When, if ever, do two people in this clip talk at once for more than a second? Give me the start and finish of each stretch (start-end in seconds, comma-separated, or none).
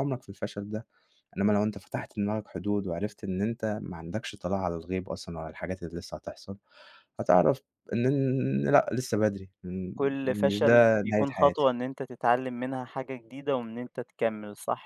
9.9-11.7